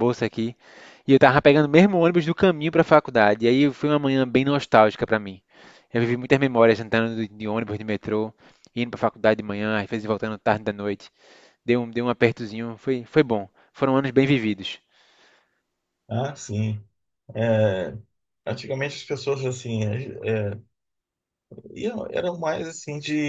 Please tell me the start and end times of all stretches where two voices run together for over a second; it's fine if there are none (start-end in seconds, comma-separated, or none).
none